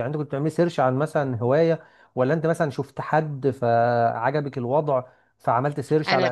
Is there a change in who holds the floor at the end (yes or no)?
yes